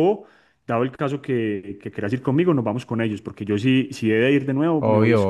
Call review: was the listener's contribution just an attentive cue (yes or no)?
no